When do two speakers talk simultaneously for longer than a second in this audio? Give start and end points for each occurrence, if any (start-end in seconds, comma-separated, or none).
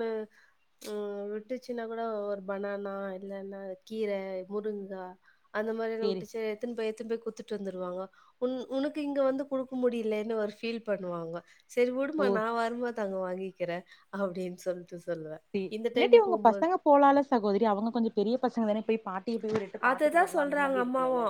none